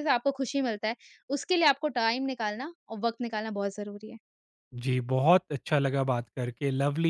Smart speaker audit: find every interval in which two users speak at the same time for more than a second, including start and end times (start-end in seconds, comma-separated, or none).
none